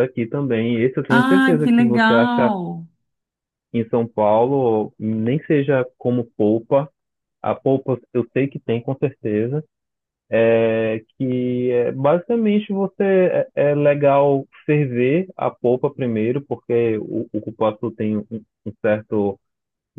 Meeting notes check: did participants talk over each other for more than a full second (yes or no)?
yes